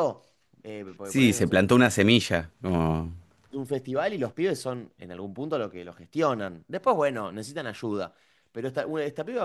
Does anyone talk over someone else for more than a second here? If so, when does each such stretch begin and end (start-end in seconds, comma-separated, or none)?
none